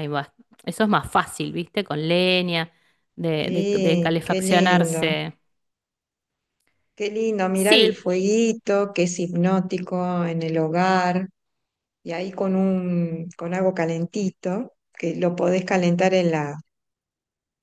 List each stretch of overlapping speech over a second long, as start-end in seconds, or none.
3.4-5.2